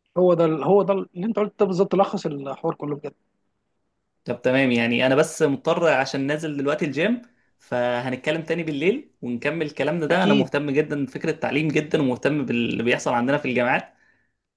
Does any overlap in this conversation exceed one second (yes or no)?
no